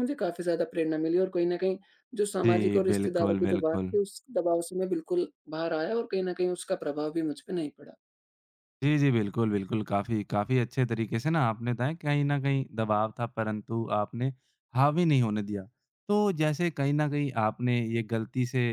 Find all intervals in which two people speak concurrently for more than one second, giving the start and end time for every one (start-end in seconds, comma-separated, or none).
2.5-3.9